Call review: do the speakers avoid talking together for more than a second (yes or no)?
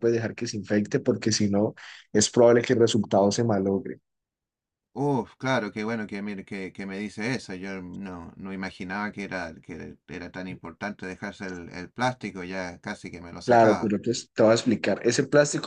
yes